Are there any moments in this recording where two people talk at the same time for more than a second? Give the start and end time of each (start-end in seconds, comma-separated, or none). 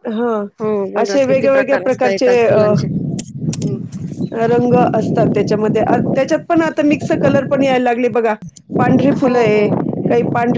1.0-2.6